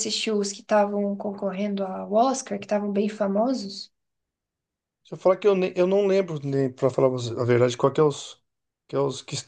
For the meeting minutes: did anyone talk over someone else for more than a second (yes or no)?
no